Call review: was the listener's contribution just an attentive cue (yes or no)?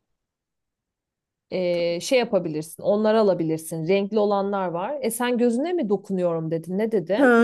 no